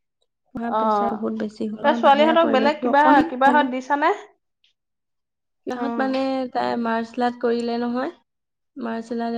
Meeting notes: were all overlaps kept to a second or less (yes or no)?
no